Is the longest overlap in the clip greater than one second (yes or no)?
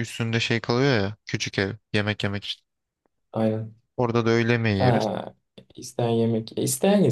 no